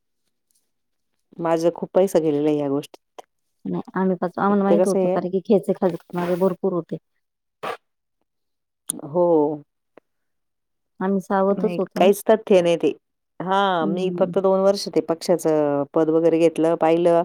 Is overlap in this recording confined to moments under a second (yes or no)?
yes